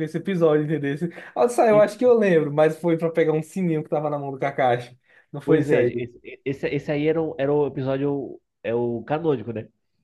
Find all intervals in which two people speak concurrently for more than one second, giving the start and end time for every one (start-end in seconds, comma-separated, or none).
none